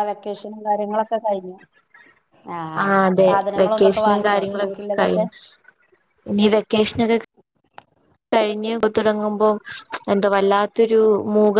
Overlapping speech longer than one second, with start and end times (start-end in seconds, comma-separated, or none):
3.2-5.2